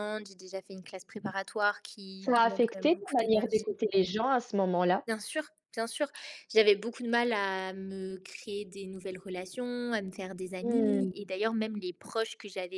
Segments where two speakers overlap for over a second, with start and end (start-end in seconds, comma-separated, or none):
2.2-3.6